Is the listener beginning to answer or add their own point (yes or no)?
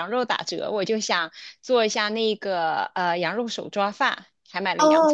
yes